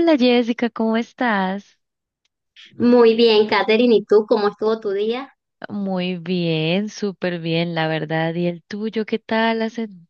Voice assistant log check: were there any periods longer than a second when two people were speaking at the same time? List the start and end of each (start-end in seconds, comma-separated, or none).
none